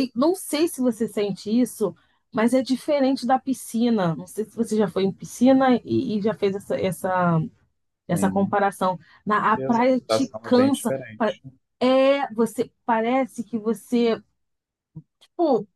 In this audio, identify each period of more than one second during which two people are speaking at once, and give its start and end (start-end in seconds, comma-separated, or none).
9.6-11.3